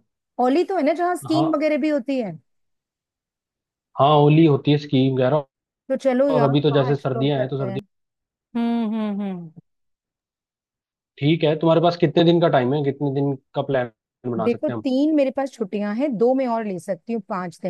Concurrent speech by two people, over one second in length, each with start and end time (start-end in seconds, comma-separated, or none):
6.3-7.8